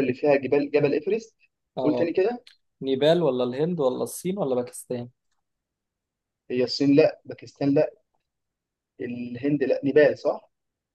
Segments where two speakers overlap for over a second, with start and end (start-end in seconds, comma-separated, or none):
none